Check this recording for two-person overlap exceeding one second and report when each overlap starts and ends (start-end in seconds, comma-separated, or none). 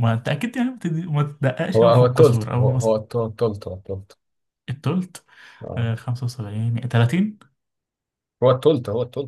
1.8-3.0